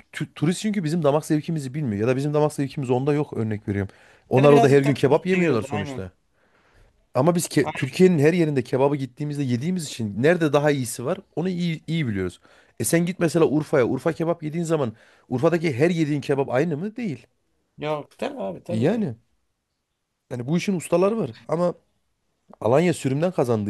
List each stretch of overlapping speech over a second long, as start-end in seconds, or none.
4.4-6.0